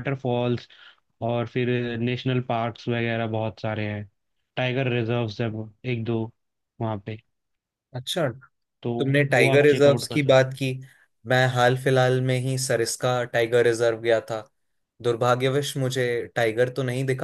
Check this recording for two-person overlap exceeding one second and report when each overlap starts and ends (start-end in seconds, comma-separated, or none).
9.4-10.6